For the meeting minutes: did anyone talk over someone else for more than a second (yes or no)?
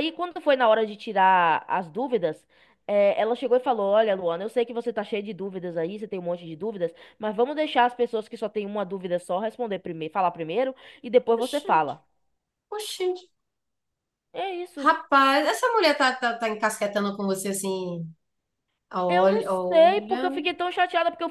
yes